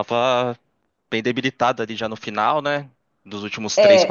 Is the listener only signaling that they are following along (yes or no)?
no